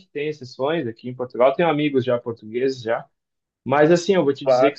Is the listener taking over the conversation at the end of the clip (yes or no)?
no